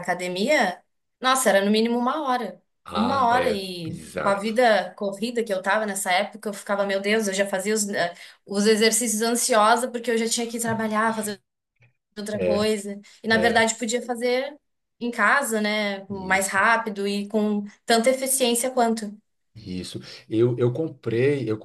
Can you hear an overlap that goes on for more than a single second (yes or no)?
yes